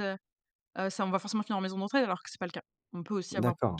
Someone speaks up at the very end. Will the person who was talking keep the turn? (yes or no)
no